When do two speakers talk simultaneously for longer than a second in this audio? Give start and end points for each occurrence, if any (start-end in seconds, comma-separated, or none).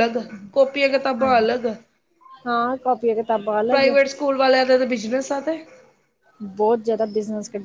none